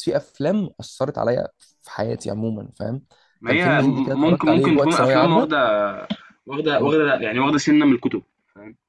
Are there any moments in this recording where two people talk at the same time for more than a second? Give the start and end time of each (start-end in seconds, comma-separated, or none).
3.4-5.6